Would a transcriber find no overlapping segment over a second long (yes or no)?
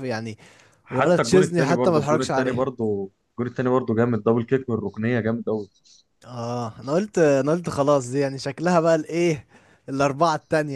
no